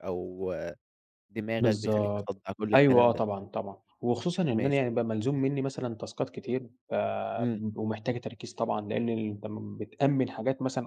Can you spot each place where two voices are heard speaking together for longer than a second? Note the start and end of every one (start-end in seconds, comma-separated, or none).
1.6-3.2